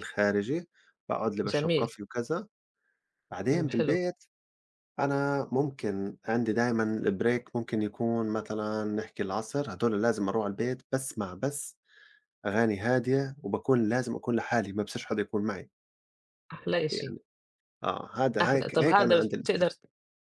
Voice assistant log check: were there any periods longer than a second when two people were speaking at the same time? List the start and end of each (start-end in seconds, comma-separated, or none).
18.4-19.7